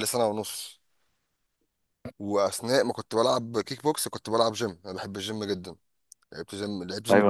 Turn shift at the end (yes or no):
yes